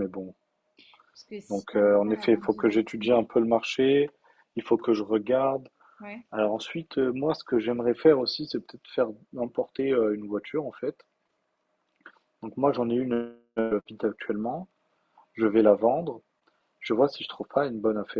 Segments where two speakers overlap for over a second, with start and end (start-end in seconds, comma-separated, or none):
1.5-3.2